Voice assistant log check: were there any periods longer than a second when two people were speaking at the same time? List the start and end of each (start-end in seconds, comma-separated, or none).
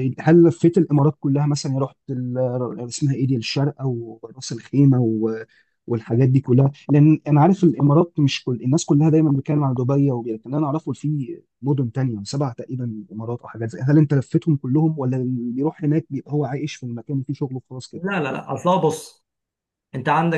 none